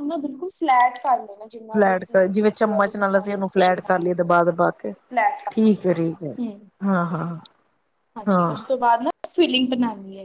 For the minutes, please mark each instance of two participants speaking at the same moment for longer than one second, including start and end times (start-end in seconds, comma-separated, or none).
1.7-4.1